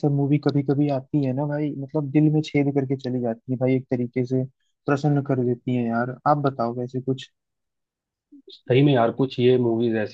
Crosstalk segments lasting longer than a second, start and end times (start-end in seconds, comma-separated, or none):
none